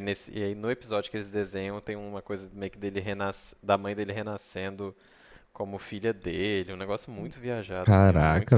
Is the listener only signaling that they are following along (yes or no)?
no